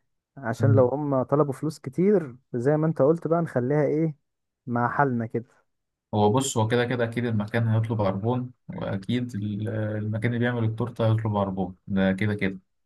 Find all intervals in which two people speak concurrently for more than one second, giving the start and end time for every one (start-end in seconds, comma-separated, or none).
none